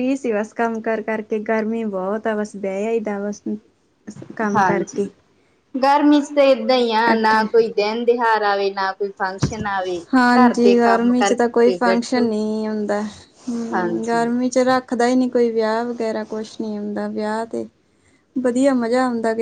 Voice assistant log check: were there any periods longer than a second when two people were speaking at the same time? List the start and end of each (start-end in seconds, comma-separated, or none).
10.4-12.3